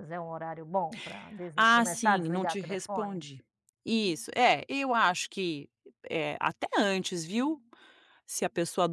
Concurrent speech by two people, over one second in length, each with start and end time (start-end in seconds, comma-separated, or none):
1.7-3.2